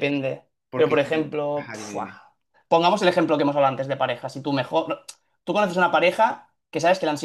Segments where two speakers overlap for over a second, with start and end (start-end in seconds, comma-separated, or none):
0.7-2.1